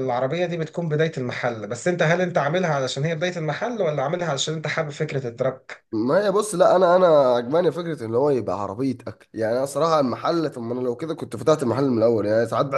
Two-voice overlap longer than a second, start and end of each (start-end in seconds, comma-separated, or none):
none